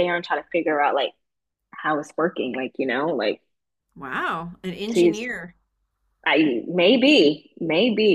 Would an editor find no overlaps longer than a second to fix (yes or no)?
yes